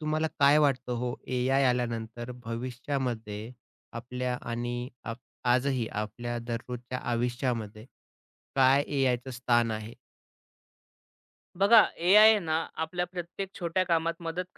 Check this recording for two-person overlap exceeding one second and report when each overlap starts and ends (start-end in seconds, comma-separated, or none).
none